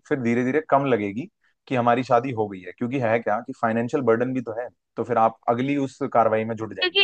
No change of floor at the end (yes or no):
no